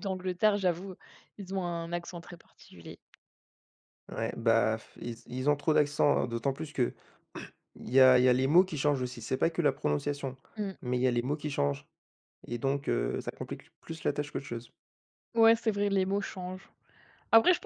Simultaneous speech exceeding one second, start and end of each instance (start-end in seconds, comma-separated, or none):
none